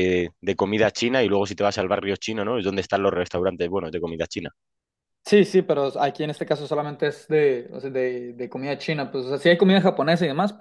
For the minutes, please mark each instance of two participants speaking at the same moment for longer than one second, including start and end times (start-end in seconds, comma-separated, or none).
none